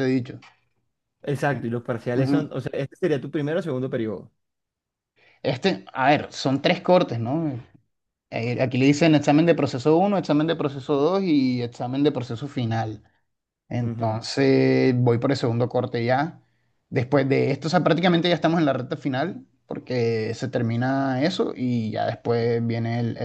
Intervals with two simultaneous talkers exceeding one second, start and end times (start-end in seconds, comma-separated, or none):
none